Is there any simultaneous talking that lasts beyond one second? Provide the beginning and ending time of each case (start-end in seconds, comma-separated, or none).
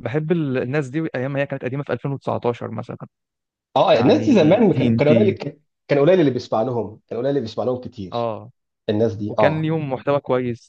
3.9-5.3